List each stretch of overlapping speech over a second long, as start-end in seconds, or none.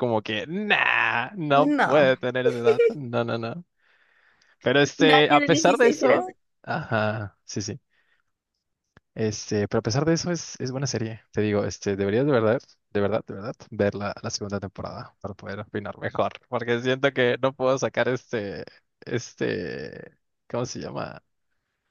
5.0-6.3